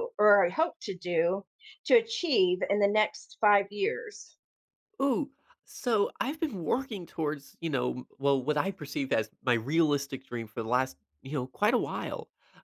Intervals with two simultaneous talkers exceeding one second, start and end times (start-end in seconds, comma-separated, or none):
none